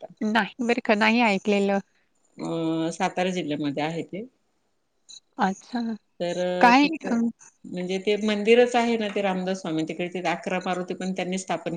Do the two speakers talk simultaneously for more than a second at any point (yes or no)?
no